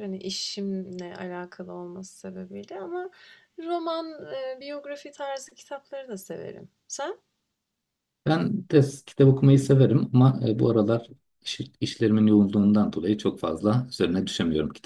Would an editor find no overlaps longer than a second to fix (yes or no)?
yes